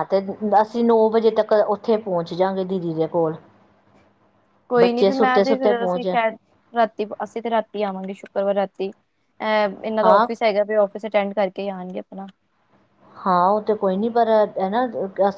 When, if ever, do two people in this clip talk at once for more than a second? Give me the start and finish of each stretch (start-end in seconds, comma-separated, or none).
4.8-6.0